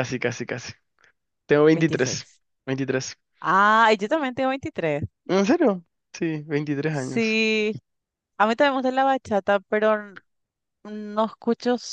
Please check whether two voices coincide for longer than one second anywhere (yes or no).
no